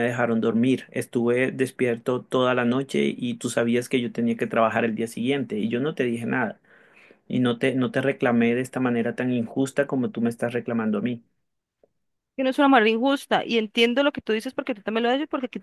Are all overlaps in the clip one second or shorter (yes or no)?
yes